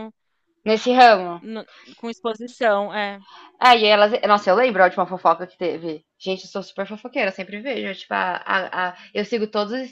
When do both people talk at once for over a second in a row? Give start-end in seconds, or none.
none